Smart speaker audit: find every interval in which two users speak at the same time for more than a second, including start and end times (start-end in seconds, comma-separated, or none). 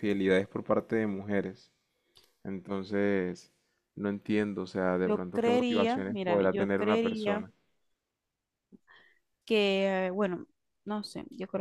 5.0-7.5